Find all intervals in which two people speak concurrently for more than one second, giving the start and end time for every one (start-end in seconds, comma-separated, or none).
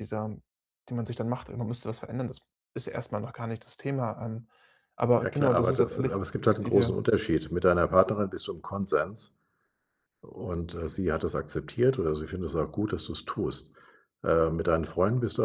5.2-7.0